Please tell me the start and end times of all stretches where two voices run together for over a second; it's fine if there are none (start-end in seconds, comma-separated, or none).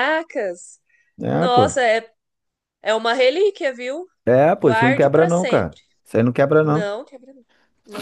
4.5-5.8